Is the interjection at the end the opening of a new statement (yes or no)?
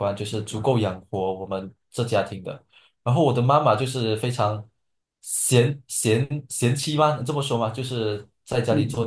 no